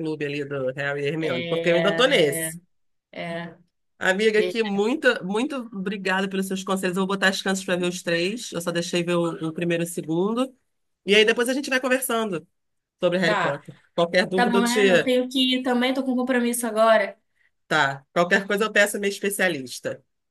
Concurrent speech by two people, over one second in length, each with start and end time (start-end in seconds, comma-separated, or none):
1.2-2.5